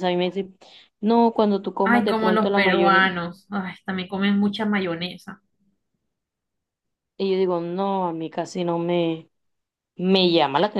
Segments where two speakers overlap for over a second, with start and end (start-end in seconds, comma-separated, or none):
1.8-3.1